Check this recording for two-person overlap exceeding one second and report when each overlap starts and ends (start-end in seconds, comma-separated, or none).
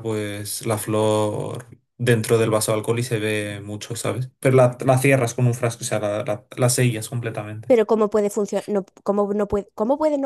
none